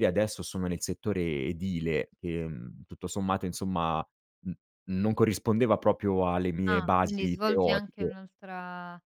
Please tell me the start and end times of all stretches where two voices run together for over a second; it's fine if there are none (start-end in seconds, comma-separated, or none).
6.7-8.1